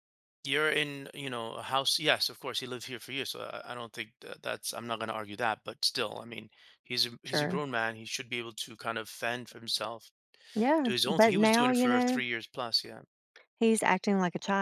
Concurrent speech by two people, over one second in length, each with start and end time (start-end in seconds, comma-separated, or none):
10.8-12.2